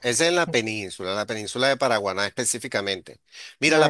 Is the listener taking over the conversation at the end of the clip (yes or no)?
no